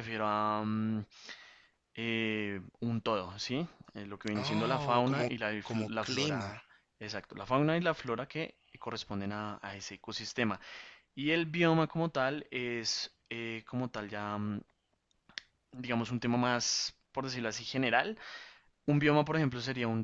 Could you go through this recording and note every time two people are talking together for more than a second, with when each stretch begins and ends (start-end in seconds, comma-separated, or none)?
4.3-6.5